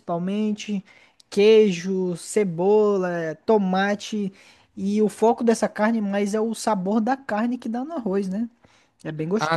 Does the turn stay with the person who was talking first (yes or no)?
no